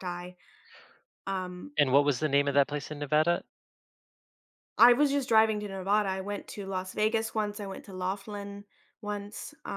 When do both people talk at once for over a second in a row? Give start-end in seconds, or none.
none